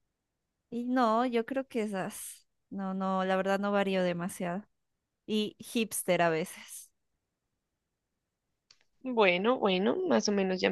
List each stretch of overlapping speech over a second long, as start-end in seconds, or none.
none